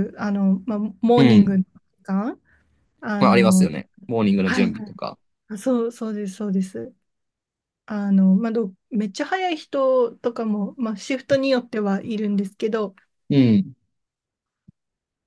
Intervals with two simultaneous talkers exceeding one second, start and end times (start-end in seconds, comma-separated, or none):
none